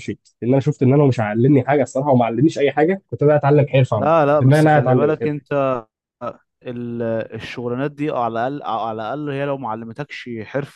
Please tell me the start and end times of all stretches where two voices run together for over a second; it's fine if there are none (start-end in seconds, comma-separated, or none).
4.0-5.4